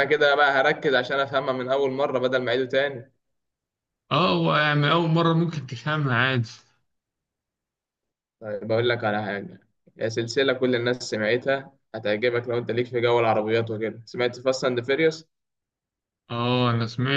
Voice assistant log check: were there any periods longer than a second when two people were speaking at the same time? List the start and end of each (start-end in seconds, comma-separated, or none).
none